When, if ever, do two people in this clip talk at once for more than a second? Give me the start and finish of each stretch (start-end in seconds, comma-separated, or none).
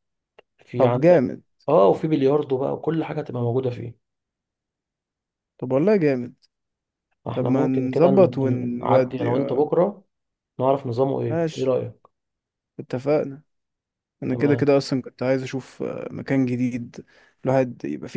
7.3-9.7